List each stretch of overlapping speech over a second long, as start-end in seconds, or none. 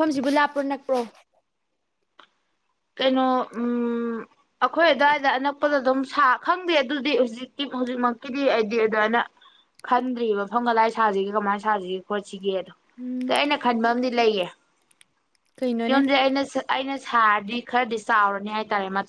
none